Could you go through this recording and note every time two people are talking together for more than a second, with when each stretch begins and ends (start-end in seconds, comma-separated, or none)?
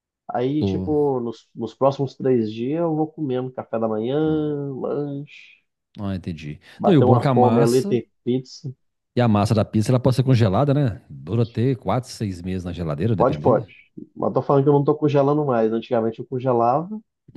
6.8-8.0